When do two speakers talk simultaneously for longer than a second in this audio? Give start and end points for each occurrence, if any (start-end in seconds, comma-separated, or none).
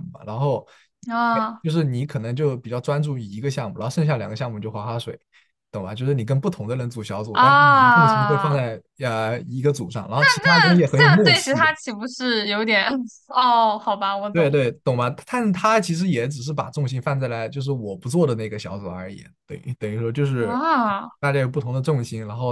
7.3-8.6, 10.4-11.7